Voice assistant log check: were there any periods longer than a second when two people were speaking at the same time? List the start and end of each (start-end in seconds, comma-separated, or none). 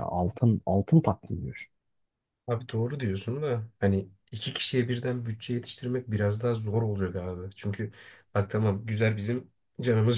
none